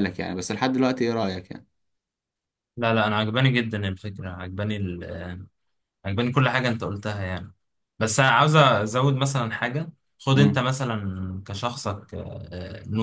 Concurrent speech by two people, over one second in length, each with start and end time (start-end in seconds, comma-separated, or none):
none